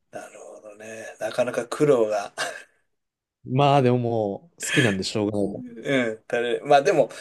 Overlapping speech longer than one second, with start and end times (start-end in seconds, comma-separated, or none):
none